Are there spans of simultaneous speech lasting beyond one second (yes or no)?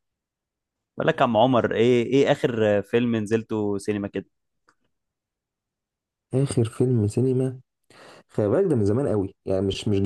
no